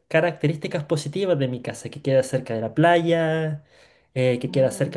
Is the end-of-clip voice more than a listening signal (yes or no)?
no